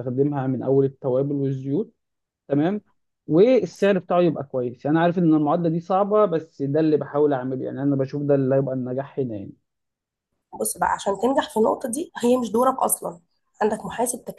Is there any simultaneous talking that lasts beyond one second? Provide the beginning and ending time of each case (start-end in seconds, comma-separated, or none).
none